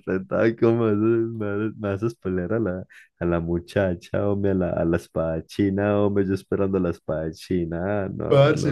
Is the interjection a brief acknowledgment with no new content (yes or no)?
no